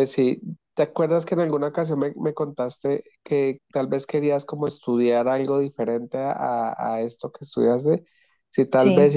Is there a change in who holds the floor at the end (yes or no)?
no